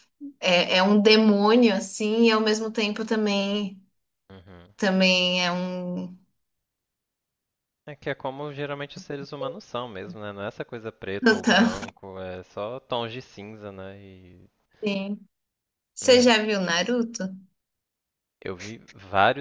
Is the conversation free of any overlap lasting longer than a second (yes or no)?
yes